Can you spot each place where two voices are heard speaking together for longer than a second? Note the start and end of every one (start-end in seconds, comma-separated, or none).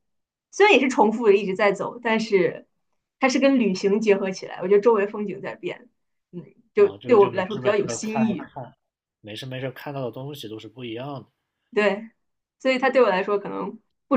6.8-8.4